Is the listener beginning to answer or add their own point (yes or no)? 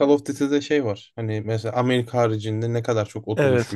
yes